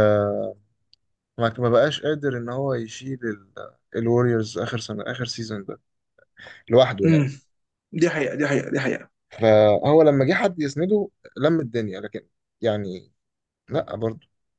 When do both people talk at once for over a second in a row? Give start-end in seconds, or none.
none